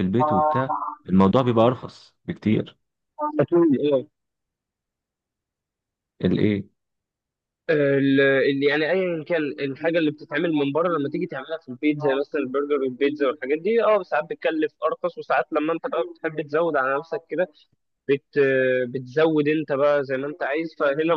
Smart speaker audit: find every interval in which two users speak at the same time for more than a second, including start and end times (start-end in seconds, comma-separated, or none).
none